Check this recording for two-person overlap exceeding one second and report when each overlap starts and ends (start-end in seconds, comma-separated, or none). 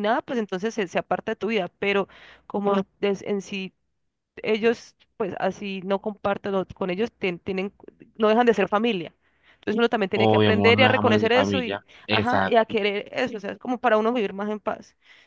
10.1-12.8